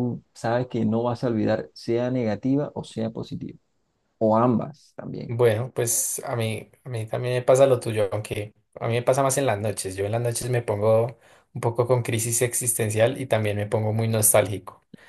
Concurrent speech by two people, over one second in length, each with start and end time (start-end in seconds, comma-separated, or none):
none